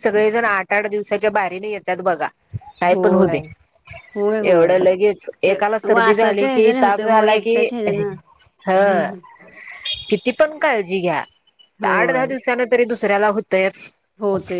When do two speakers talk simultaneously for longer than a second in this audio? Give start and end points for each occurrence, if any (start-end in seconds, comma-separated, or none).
5.5-7.6